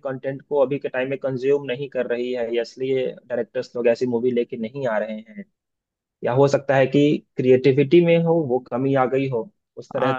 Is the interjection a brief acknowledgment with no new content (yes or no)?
no